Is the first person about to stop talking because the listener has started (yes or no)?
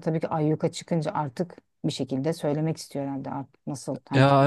yes